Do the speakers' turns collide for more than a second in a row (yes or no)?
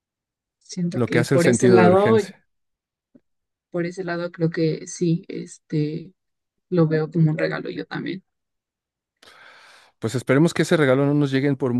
yes